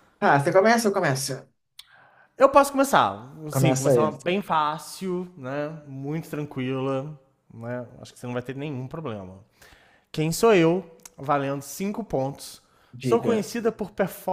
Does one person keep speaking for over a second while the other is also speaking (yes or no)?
no